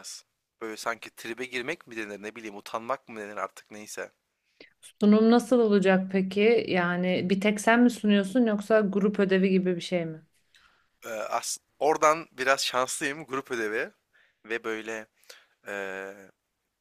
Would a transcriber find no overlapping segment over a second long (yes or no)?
yes